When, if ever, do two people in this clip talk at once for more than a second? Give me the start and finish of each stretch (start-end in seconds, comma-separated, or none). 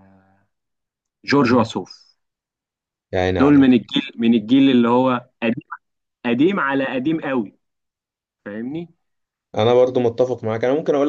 none